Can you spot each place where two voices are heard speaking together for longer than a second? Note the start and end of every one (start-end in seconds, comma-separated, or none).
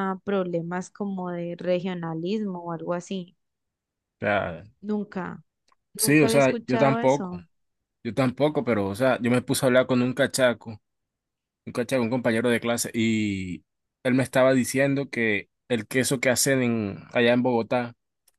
6.0-7.4